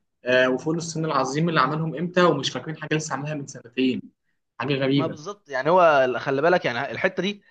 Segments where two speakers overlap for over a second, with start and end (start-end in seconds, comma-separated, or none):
none